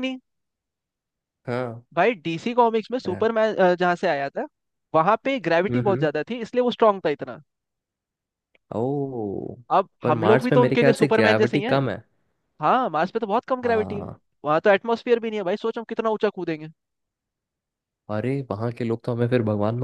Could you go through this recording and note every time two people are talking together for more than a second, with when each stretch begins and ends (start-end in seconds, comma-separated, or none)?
10.0-11.8